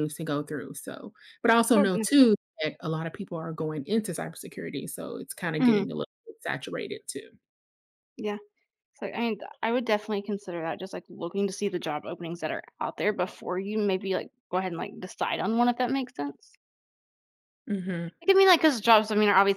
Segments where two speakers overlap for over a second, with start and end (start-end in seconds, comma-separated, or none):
none